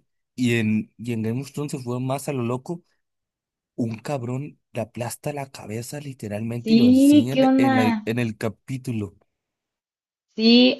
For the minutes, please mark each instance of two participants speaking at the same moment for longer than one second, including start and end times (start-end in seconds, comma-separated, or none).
6.6-8.0